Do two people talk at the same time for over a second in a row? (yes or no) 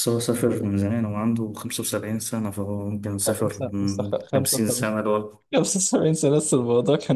yes